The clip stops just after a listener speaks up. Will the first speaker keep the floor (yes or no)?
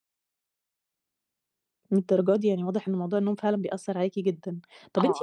yes